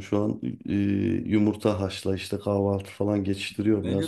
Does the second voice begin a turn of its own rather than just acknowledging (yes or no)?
yes